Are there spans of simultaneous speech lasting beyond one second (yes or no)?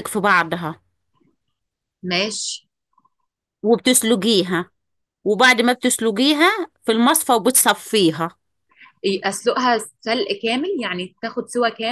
no